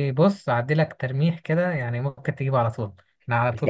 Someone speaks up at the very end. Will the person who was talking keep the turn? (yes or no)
yes